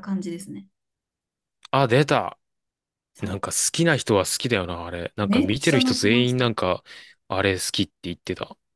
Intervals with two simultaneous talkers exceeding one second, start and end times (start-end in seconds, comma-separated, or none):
5.2-6.5